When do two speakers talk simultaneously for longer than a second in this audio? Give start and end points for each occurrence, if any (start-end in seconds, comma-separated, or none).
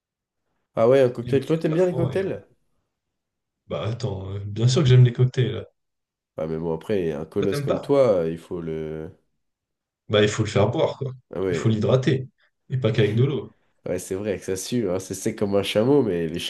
1.2-2.4